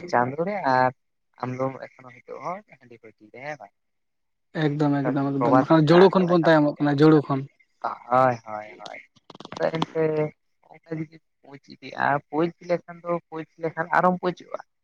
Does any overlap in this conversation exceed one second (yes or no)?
yes